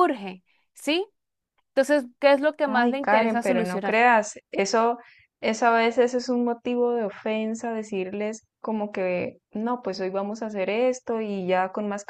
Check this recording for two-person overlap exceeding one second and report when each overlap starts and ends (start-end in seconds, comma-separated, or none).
2.6-4.0